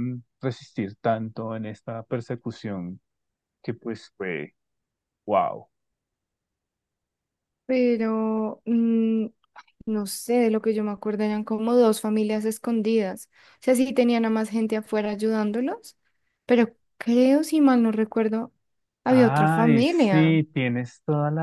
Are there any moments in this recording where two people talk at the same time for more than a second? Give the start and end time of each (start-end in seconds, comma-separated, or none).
19.1-20.4